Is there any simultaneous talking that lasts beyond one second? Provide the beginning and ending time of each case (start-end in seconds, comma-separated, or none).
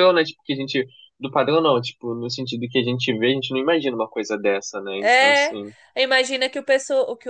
none